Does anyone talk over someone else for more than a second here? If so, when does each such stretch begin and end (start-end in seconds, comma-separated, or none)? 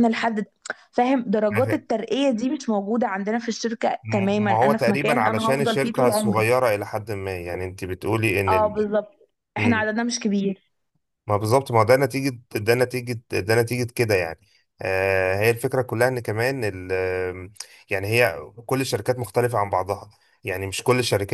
4.0-6.5